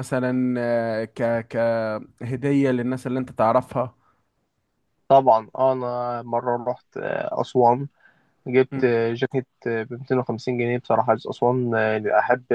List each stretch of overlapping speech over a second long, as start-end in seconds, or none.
none